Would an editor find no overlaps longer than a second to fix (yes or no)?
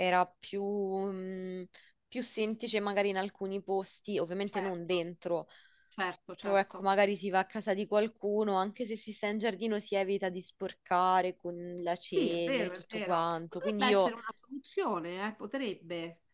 no